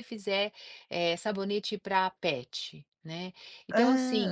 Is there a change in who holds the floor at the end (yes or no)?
no